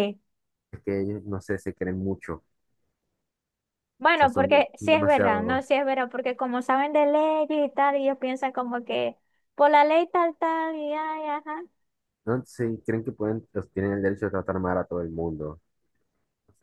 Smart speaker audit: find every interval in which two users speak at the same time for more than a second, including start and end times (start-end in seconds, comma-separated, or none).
4.1-5.7